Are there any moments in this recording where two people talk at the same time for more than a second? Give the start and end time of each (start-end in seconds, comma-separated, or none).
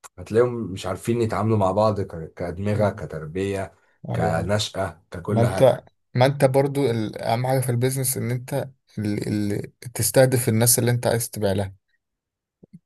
none